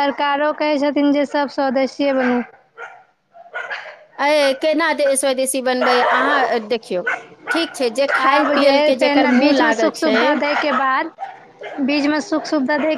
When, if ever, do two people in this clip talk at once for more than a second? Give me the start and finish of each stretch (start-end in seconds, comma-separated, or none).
8.2-10.2